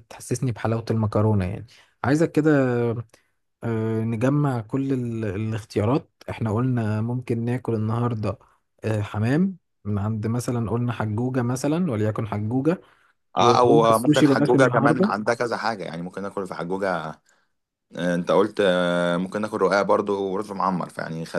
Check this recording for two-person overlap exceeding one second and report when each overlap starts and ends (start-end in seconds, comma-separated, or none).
13.4-15.1